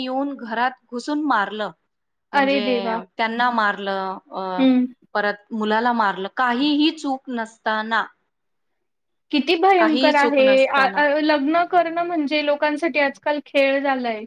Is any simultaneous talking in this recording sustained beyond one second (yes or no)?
yes